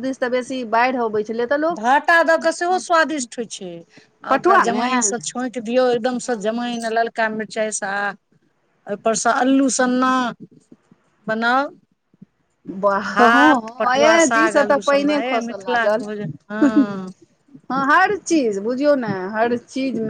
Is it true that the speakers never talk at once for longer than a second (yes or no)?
no